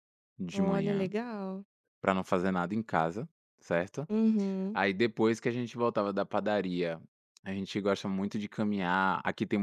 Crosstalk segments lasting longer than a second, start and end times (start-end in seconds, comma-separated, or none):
none